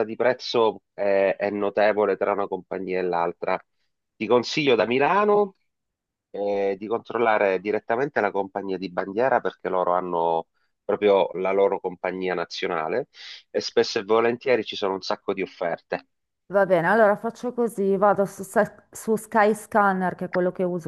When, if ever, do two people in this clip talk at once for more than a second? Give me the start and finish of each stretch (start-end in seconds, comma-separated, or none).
none